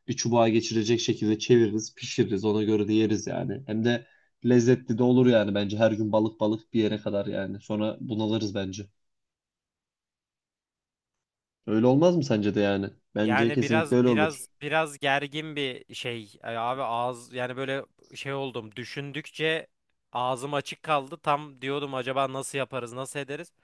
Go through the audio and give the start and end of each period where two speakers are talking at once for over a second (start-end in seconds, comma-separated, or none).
13.2-14.5